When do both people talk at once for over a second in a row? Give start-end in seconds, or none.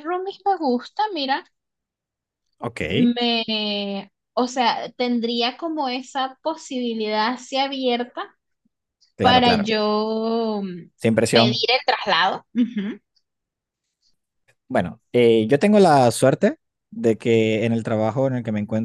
none